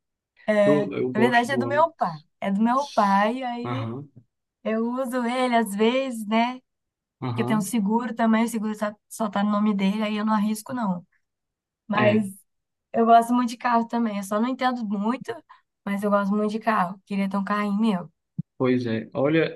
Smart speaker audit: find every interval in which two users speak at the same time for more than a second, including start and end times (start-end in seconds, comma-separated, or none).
0.6-2.2